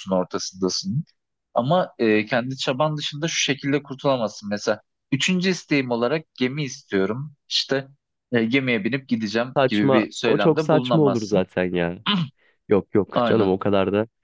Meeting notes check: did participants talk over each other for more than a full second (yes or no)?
yes